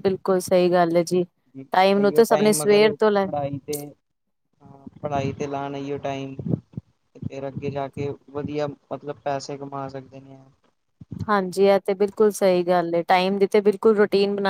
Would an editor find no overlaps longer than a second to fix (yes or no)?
no